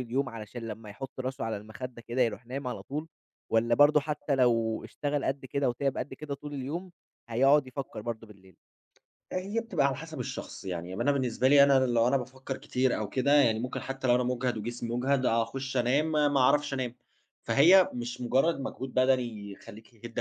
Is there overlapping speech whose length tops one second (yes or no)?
no